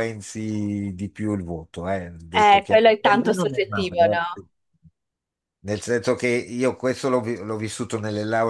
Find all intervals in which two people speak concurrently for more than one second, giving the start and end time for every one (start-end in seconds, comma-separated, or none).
2.3-4.5